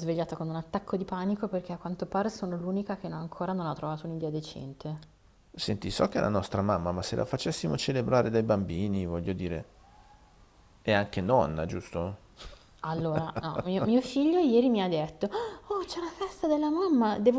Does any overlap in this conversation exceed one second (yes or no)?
no